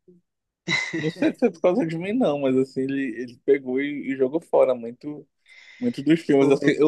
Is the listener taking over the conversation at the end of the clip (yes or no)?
no